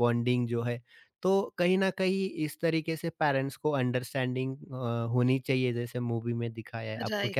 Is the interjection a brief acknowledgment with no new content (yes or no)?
no